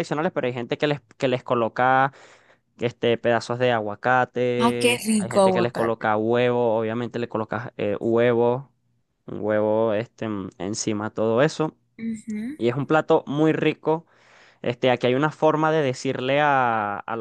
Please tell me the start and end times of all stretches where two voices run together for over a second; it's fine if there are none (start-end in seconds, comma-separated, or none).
4.6-6.1